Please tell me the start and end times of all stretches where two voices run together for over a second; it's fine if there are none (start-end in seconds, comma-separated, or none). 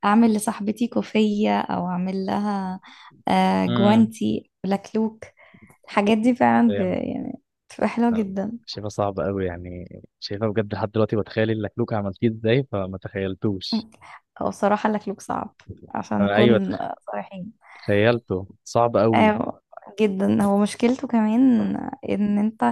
none